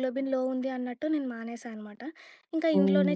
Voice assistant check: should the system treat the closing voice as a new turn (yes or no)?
no